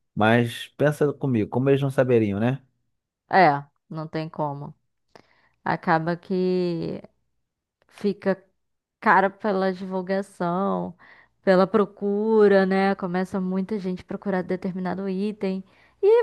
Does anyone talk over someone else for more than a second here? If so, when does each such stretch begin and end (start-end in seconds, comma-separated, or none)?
none